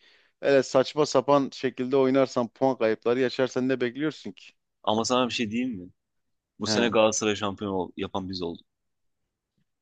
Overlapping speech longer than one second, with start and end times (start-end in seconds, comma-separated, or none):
none